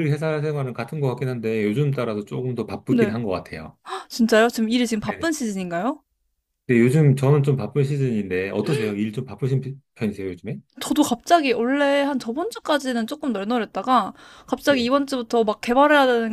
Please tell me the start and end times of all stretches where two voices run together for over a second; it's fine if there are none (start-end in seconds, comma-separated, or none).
none